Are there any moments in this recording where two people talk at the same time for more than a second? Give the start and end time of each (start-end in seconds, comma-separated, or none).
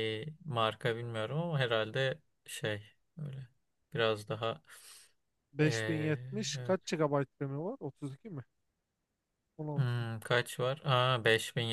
none